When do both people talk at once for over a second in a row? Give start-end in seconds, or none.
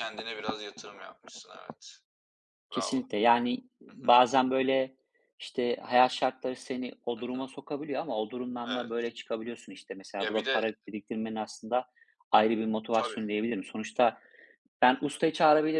none